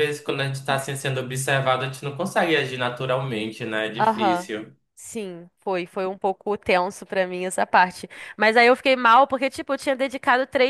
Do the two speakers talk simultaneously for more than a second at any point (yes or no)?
no